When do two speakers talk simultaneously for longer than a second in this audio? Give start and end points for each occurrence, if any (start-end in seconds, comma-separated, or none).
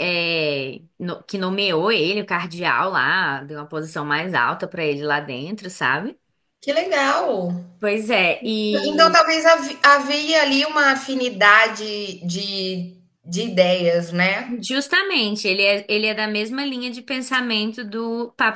none